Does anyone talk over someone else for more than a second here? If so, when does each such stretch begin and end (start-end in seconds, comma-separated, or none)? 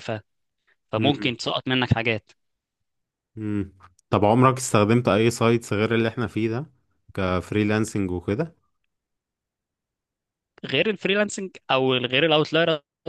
none